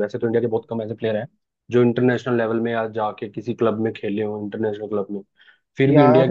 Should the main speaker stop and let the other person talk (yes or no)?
no